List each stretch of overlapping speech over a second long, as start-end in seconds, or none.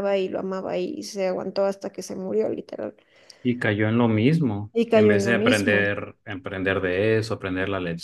4.7-6.0